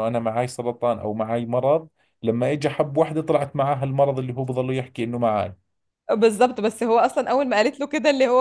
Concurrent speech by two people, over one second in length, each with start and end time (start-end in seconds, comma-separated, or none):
none